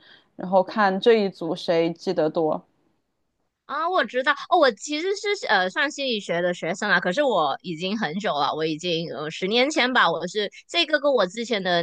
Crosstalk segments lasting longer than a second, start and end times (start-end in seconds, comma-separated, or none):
none